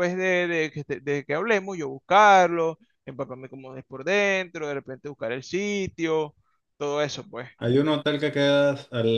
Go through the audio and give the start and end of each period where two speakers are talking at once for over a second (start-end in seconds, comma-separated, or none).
none